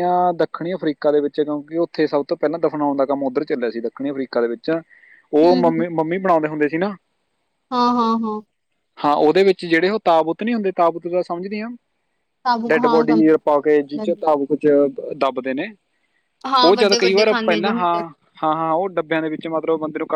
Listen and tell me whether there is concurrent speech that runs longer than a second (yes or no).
yes